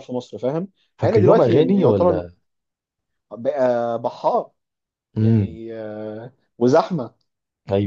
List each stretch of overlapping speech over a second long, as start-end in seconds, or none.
1.0-2.2